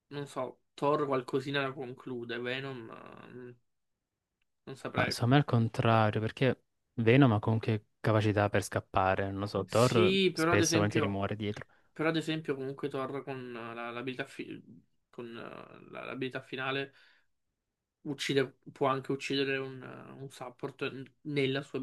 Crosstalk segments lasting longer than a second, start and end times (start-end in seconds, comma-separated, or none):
9.7-11.2